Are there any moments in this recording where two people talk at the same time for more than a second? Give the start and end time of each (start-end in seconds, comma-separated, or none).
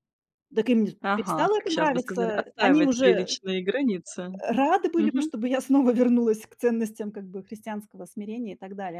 1.0-3.4